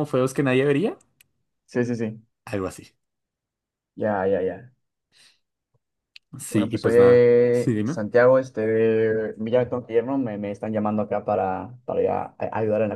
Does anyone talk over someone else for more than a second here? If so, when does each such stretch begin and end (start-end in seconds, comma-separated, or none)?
6.5-8.0